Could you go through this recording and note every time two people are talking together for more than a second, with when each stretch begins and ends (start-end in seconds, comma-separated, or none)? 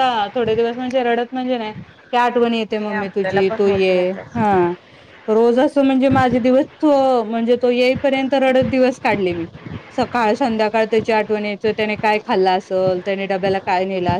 2.5-4.6